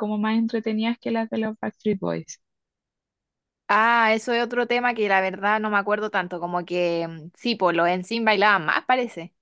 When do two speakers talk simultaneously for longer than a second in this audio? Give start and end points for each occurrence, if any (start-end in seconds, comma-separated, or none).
none